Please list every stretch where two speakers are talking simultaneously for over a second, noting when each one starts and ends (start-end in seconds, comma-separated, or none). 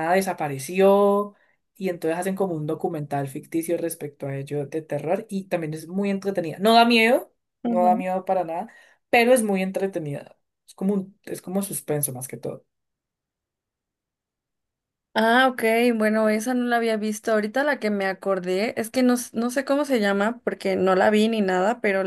none